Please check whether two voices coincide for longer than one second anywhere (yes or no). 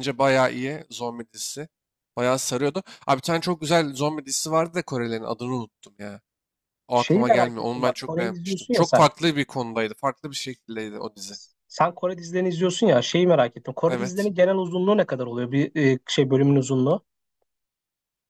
yes